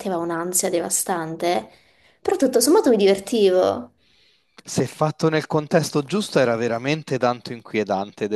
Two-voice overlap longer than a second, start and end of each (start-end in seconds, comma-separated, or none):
none